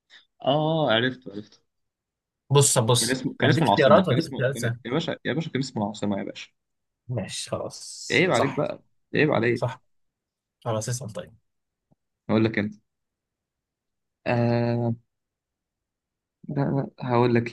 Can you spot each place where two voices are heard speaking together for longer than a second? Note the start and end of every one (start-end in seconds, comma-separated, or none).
3.0-4.8